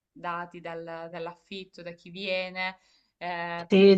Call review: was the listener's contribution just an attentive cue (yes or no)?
no